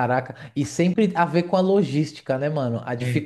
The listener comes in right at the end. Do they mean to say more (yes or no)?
no